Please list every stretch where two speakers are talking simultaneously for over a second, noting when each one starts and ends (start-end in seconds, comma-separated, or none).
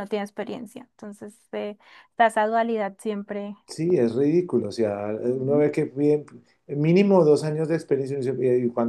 none